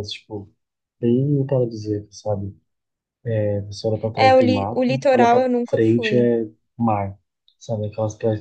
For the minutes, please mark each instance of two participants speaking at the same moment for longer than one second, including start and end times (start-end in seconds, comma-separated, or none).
4.2-6.2